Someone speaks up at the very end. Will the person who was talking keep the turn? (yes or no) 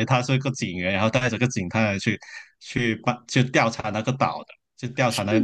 yes